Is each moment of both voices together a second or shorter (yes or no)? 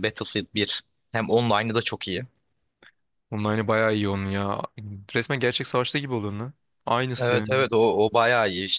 yes